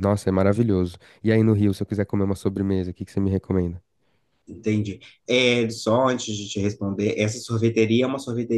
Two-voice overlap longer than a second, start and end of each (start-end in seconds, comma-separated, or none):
none